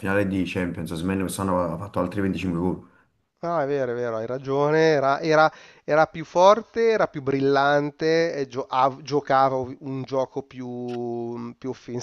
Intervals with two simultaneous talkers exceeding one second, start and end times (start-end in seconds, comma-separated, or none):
none